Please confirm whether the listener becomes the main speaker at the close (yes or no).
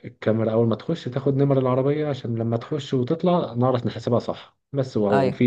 no